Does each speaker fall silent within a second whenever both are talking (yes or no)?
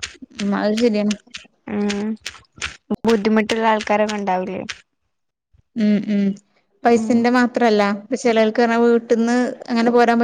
yes